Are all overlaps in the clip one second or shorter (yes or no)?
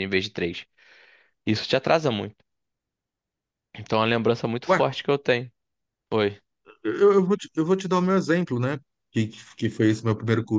yes